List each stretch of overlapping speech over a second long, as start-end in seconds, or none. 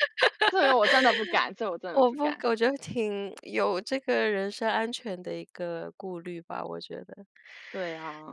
none